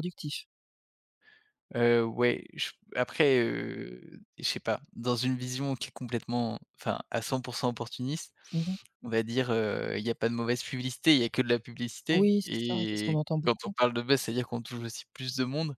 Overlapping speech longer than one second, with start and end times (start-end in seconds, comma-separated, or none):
12.1-13.7